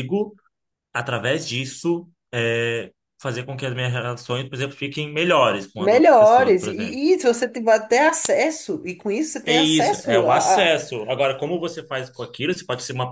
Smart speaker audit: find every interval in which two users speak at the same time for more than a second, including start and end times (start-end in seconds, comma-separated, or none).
5.8-7.0, 9.4-10.7